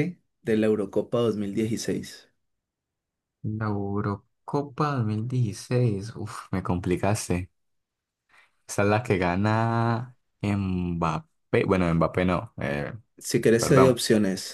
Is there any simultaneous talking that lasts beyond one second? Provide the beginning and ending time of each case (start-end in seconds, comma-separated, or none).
none